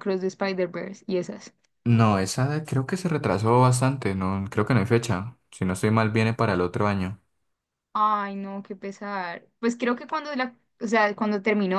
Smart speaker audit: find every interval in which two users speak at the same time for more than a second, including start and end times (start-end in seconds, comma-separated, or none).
none